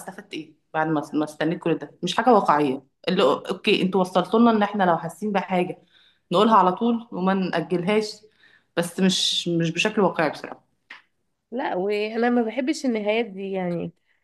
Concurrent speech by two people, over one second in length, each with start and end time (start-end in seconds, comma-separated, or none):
none